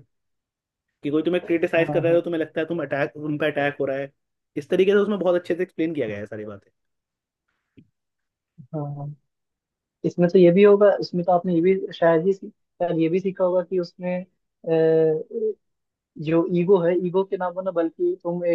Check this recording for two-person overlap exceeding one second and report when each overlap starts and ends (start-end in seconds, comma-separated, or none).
none